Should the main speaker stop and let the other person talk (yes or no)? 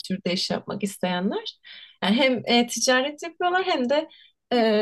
no